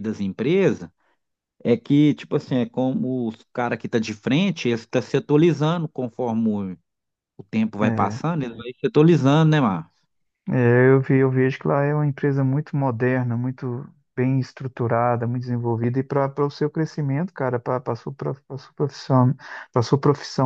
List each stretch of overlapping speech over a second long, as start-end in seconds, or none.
none